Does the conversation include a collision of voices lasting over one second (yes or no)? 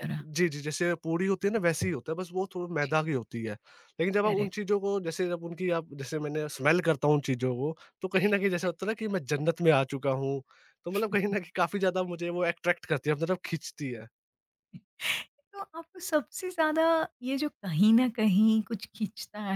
no